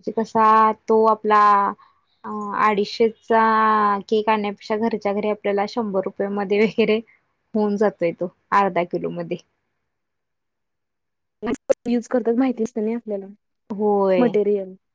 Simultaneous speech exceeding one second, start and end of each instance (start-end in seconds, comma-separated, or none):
none